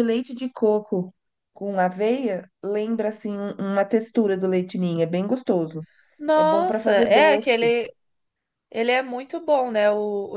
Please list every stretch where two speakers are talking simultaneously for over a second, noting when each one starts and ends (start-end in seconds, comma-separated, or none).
6.3-7.7